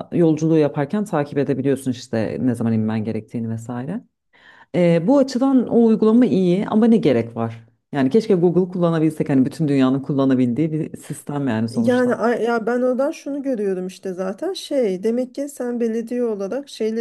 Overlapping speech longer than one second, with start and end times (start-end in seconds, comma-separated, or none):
none